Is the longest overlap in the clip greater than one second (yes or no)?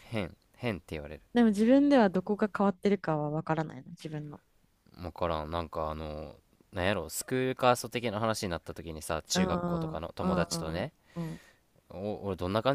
yes